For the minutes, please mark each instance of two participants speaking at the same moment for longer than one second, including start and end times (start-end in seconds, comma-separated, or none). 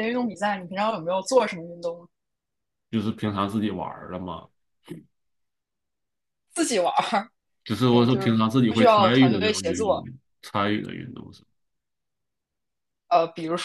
7.8-9.9